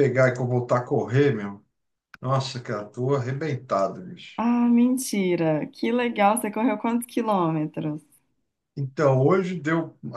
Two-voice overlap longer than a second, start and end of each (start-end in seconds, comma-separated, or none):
none